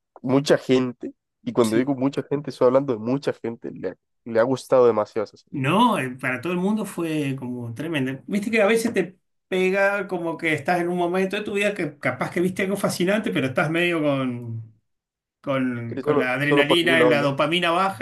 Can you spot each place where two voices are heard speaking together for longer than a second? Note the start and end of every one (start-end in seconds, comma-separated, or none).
15.9-17.3